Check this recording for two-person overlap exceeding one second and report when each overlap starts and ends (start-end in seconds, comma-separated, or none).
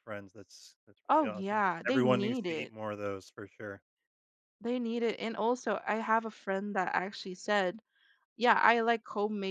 1.1-2.7